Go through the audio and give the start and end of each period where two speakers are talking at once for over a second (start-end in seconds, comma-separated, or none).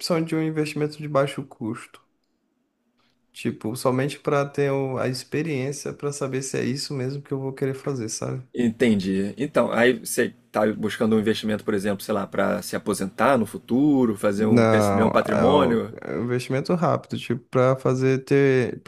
14.4-15.9